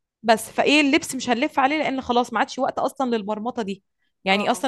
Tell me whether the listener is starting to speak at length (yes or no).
no